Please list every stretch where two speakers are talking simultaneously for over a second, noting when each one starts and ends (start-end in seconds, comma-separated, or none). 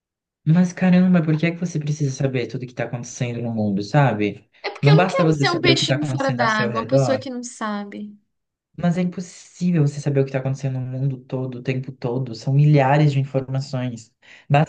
4.6-7.2